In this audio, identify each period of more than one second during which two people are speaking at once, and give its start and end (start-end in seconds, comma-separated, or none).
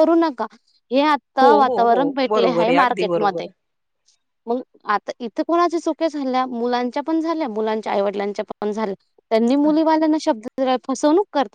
1.4-3.5